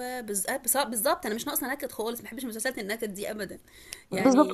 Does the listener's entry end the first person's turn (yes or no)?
yes